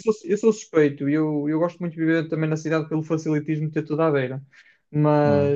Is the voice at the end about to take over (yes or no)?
no